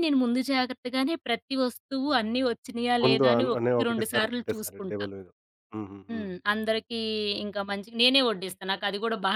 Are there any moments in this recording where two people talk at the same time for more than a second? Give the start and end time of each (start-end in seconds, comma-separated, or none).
3.0-5.0